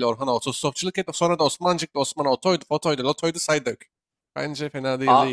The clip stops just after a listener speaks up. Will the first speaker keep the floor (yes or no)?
no